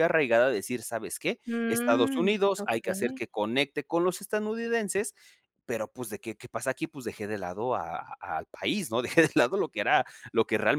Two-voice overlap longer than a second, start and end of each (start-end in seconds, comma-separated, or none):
1.5-3.2